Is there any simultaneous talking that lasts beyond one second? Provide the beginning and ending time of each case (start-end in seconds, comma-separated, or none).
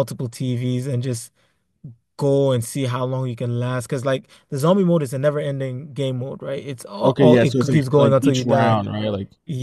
7.0-8.8